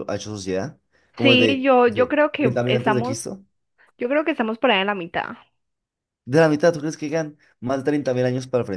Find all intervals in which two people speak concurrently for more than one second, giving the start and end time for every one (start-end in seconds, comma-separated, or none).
1.2-3.2